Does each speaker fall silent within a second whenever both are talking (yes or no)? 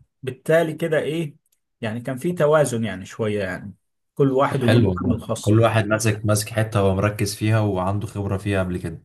no